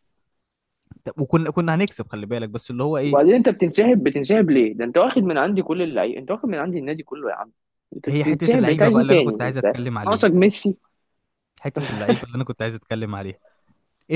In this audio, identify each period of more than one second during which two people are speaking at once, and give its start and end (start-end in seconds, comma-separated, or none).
8.1-10.3